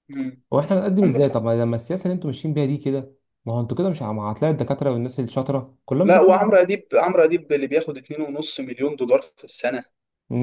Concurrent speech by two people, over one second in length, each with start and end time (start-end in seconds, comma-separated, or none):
none